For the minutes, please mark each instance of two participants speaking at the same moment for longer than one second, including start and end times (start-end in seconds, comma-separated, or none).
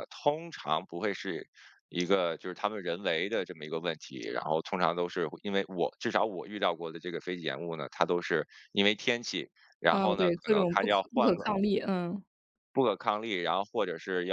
9.9-11.6